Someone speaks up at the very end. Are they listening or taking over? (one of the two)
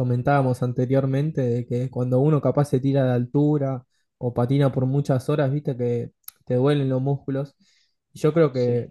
listening